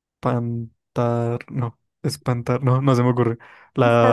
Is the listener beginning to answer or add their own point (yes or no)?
yes